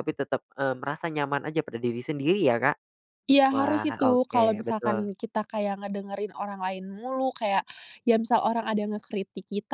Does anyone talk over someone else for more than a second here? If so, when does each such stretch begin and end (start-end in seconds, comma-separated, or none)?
3.5-5.1